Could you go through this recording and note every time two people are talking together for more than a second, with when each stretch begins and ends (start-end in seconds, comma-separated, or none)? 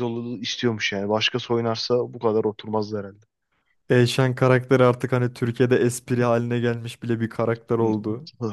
none